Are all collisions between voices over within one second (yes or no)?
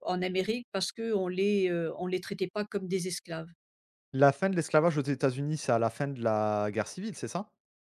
yes